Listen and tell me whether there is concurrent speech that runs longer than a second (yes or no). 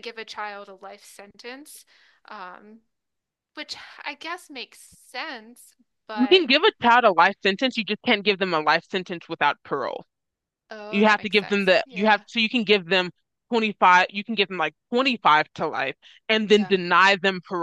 yes